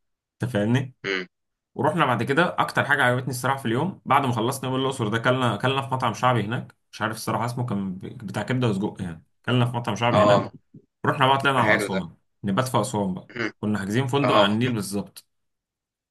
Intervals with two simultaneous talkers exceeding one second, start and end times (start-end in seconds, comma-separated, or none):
none